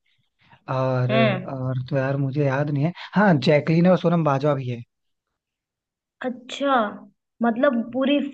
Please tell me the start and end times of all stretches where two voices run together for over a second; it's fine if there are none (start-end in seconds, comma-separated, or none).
none